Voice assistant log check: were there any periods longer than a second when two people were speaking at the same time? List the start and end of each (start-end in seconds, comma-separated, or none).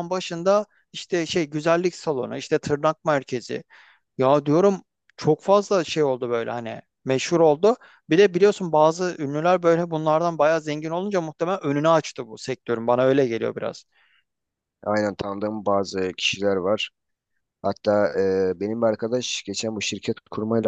none